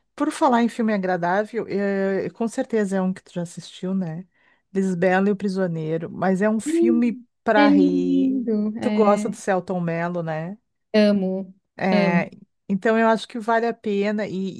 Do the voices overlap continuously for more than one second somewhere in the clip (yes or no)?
yes